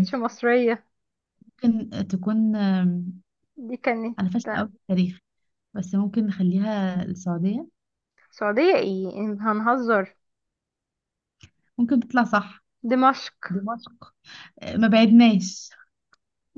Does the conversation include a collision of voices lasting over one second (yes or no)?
no